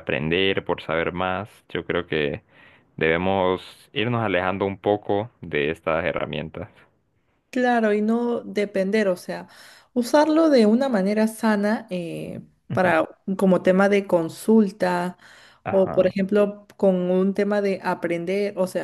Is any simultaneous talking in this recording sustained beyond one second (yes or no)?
no